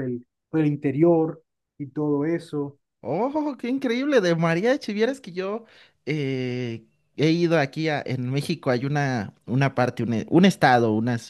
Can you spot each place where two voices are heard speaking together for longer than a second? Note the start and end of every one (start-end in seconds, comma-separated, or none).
none